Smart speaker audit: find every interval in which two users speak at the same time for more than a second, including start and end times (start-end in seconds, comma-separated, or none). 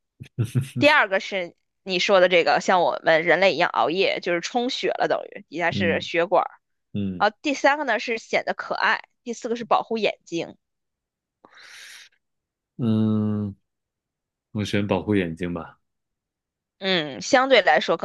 none